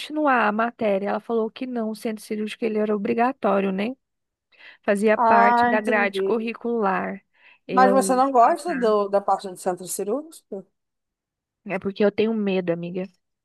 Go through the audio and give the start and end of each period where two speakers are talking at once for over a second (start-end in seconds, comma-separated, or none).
5.2-6.4, 7.7-8.9